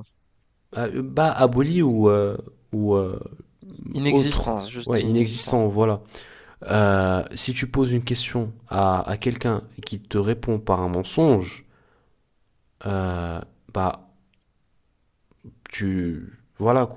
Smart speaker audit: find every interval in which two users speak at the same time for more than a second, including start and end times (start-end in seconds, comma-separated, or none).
4.0-5.6